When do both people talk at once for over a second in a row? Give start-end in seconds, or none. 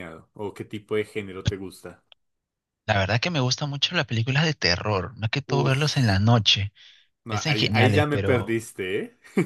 7.3-8.6